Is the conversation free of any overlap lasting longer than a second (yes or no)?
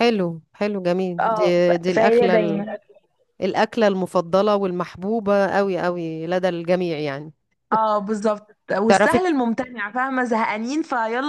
no